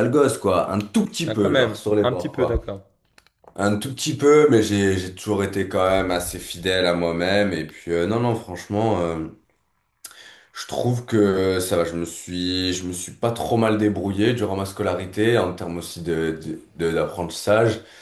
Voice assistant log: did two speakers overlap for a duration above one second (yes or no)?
yes